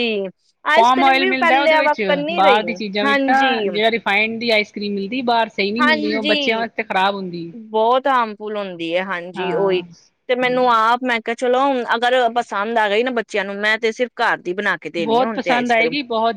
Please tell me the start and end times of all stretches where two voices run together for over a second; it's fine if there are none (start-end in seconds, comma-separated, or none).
0.8-2.6